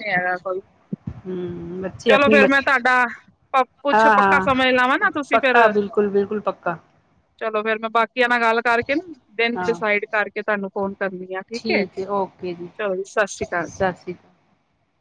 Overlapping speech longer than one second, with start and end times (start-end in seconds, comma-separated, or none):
3.7-5.5